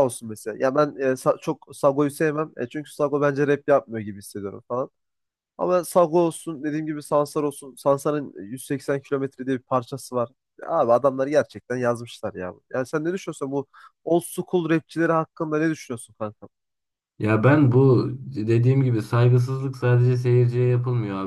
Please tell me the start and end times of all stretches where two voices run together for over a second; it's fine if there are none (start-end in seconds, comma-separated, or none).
none